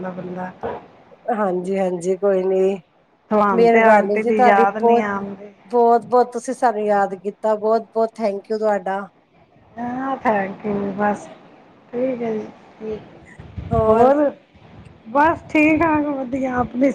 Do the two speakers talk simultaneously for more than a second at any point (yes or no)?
yes